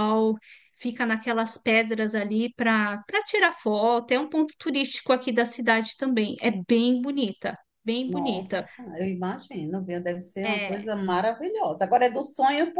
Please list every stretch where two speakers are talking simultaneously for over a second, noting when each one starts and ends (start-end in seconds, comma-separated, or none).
none